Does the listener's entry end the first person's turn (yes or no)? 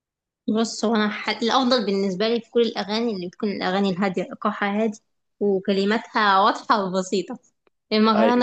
no